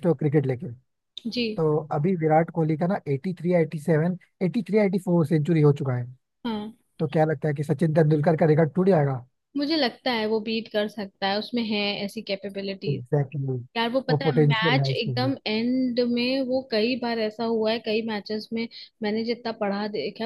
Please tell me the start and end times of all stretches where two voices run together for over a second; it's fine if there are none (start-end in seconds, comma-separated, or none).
14.1-15.3